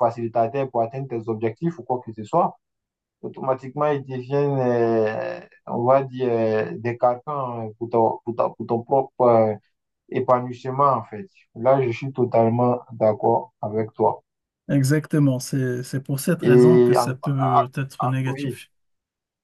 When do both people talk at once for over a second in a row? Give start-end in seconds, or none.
16.4-18.6